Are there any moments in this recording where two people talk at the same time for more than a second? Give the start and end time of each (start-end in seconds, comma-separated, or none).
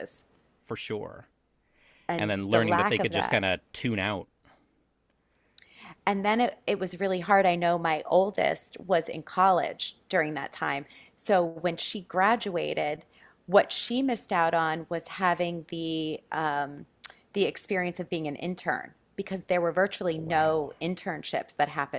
2.1-3.4